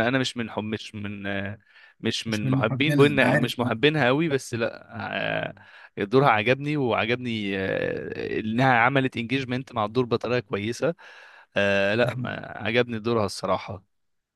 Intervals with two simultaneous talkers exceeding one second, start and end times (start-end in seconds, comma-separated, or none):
2.3-3.7